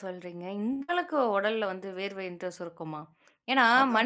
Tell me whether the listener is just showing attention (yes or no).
yes